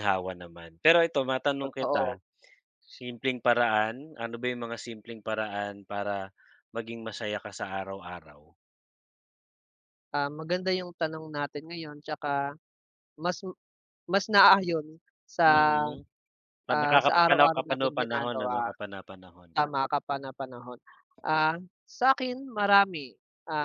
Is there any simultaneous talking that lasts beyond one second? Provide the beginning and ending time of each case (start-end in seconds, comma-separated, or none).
16.7-18.7